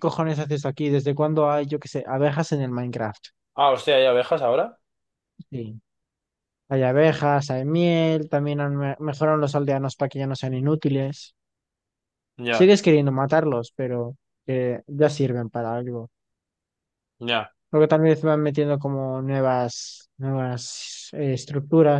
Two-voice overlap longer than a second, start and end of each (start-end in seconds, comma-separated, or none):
none